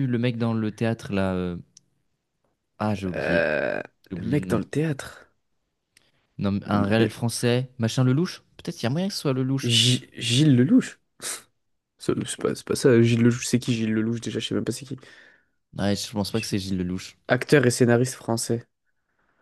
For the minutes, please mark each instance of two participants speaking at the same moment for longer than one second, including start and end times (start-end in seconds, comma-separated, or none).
none